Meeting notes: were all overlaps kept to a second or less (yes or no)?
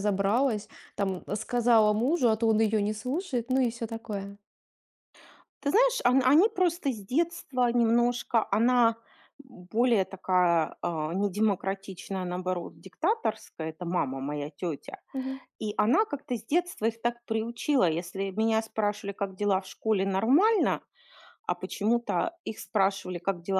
yes